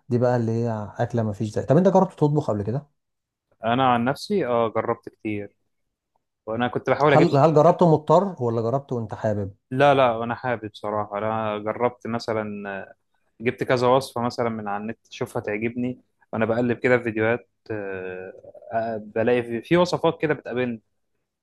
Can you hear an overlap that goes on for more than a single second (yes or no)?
no